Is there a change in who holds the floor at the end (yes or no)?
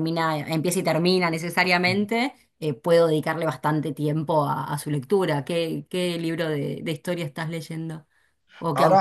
yes